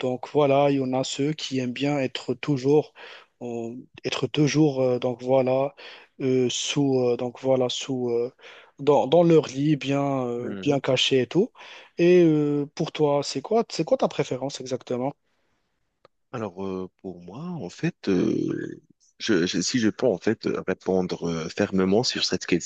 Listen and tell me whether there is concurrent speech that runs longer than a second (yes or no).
no